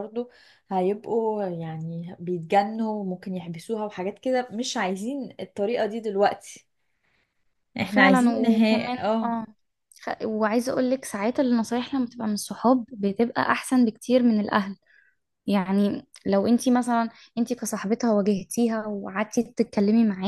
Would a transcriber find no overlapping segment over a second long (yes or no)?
no